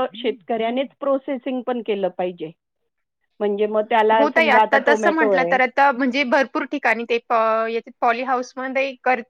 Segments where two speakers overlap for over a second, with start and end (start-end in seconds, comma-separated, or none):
none